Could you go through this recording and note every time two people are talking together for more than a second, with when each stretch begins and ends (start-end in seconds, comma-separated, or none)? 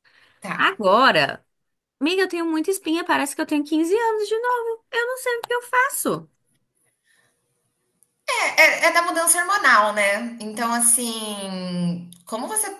none